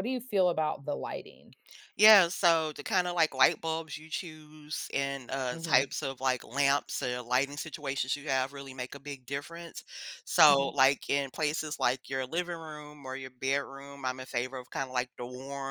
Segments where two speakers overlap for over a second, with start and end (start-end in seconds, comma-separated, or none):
none